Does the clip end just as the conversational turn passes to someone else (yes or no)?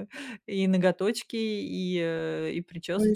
yes